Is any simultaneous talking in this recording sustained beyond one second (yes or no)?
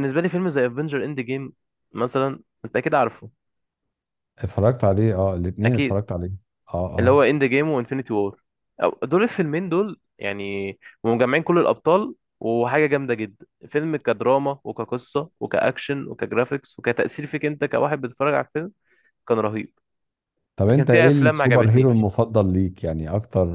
yes